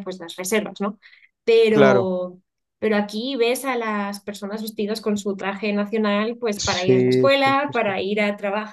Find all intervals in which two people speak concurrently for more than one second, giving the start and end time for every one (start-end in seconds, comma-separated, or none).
6.6-8.0